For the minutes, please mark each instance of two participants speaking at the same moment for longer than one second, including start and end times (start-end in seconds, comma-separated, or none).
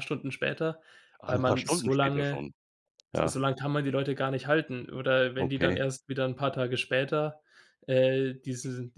1.2-2.5